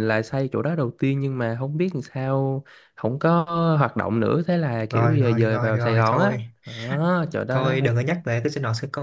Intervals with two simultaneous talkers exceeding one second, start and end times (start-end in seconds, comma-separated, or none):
4.9-6.5